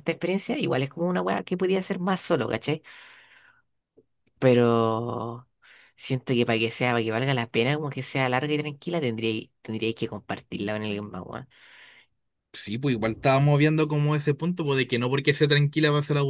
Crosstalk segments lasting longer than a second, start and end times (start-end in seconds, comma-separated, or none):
none